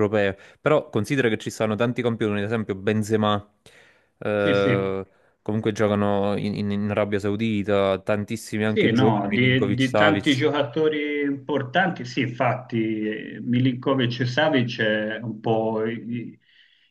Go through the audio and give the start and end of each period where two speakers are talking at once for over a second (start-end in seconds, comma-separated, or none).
8.6-10.4